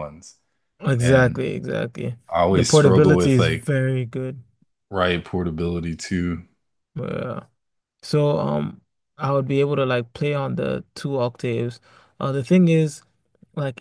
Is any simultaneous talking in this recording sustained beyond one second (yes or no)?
yes